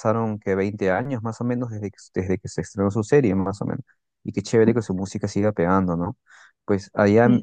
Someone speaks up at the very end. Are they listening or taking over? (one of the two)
listening